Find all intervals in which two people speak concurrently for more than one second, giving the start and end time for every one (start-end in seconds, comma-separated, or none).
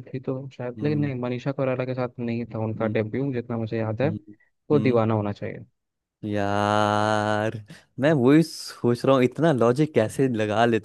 none